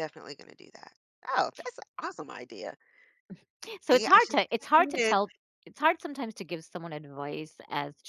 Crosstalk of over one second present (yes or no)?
yes